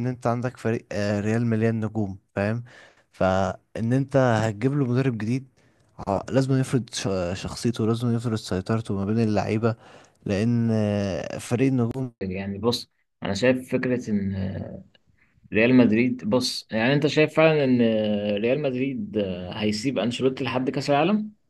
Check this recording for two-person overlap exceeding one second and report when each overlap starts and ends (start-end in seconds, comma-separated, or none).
10.3-12.1